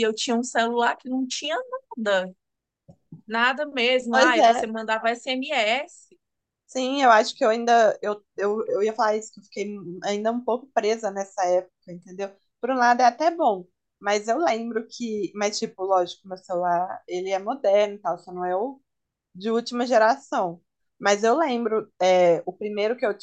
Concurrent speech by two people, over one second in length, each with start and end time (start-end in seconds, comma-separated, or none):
none